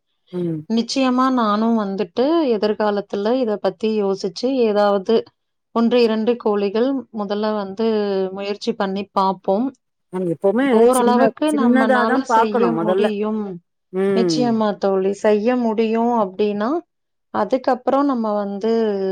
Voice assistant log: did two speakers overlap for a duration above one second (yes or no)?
yes